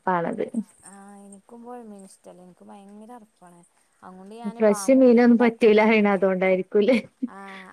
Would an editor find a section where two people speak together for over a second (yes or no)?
yes